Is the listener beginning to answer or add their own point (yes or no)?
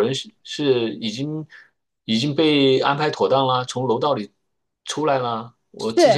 yes